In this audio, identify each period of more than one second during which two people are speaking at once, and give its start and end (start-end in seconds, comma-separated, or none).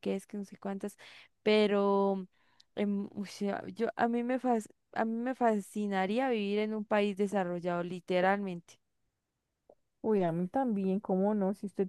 none